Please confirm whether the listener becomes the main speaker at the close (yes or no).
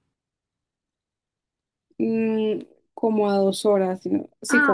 no